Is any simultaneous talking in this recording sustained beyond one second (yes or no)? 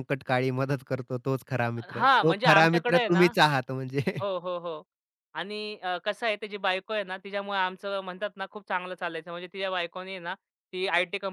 yes